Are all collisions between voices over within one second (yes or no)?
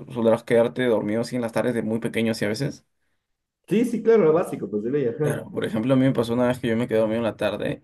yes